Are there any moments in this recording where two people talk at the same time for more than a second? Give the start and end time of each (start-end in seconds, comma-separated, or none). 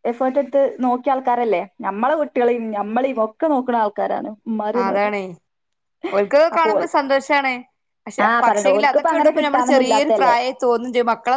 8.2-10.3